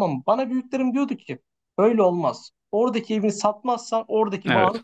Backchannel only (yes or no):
yes